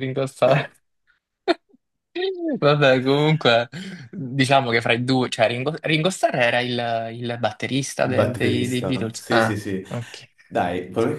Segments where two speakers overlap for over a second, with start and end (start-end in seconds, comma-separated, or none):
8.0-9.8